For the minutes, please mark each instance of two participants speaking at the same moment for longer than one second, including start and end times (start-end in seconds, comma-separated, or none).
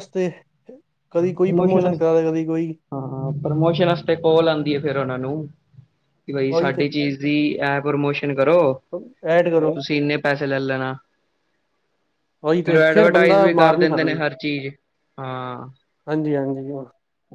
12.6-14.1